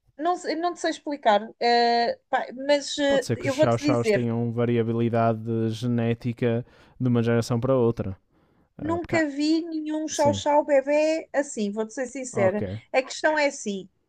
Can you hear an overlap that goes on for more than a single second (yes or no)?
yes